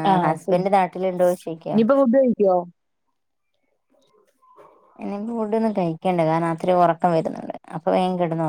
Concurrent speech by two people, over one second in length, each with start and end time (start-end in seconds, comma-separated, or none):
0.5-1.8